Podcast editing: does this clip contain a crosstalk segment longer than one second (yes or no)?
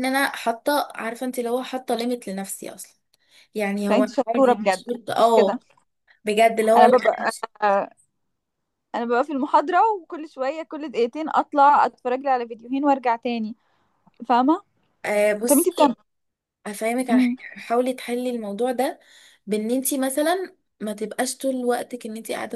yes